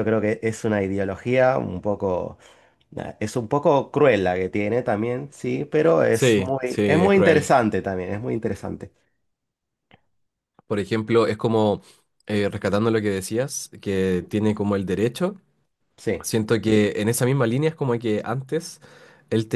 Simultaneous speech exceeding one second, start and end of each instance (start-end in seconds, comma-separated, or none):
6.1-7.5